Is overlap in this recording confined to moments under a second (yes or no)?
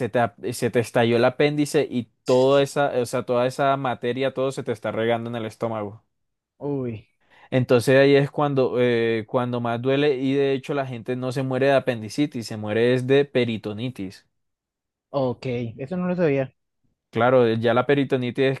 yes